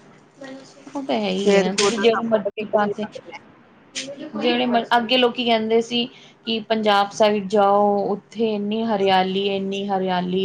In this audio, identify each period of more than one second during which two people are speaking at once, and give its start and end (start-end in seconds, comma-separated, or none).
1.4-2.9